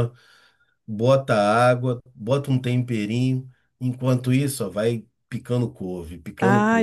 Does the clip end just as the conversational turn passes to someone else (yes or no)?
yes